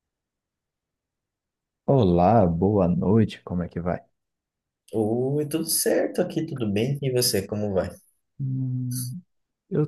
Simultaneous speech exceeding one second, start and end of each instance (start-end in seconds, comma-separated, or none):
none